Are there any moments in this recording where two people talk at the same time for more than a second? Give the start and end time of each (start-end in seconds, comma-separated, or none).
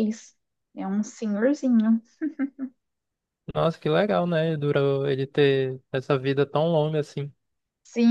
none